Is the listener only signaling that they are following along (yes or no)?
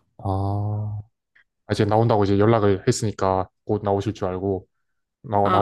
no